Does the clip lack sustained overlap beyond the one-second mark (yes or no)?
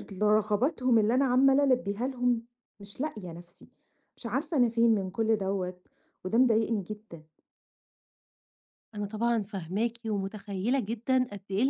yes